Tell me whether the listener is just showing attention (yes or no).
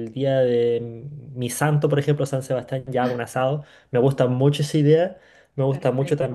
yes